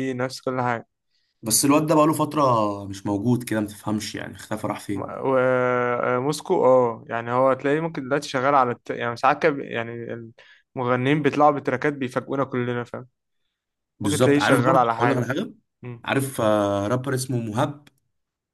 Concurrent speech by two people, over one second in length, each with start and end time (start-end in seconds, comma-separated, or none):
14.0-15.3